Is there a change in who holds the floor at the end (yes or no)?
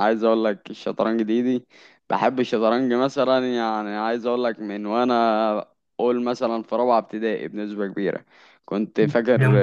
no